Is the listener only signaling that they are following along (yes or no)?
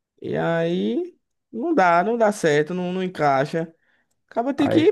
yes